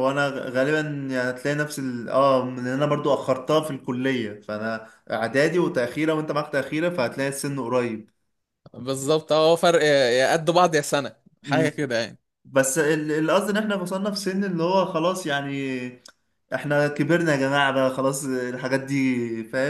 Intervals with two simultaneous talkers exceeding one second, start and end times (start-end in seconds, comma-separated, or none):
none